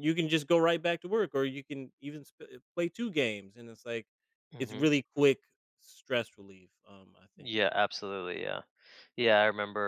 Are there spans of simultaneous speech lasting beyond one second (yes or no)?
no